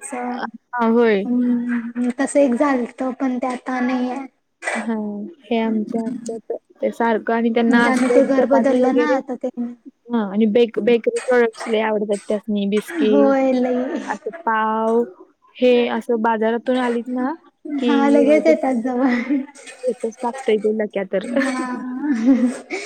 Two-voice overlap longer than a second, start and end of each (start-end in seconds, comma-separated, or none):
7.7-9.2